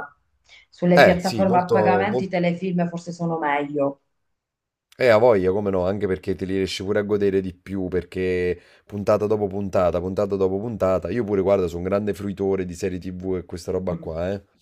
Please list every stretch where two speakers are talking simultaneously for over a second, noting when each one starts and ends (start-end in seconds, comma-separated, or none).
0.9-2.3